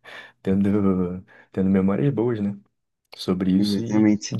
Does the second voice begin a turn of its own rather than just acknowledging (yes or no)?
no